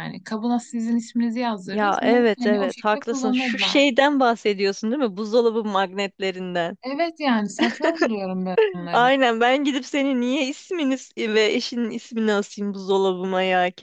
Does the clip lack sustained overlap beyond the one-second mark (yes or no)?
no